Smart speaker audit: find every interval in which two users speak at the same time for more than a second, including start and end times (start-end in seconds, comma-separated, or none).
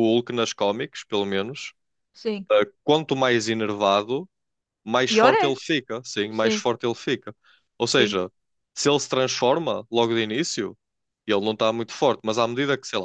none